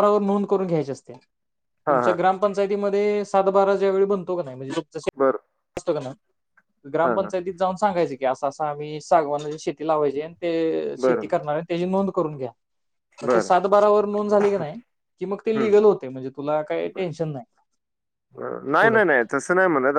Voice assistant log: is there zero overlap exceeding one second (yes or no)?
yes